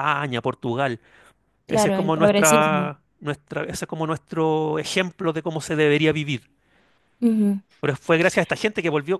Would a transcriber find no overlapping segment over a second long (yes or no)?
no